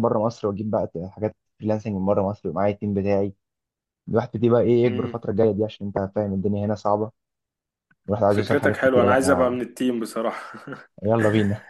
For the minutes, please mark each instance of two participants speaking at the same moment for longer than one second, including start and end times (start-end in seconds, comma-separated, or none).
8.3-9.5